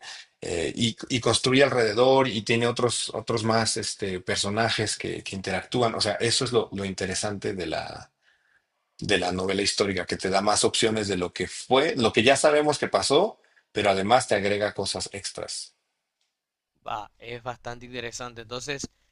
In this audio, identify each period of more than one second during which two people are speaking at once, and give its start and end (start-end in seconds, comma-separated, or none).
none